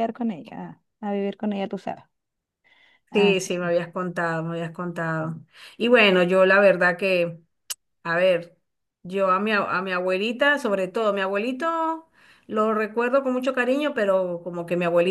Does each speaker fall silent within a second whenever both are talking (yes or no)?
yes